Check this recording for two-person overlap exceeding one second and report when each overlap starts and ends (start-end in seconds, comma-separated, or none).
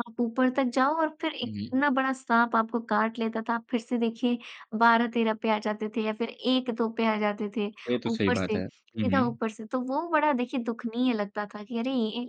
8.1-9.4